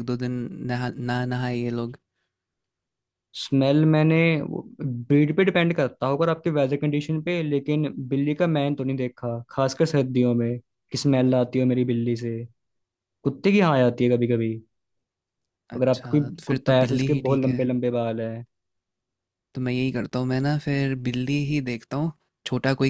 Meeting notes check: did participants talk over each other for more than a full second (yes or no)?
yes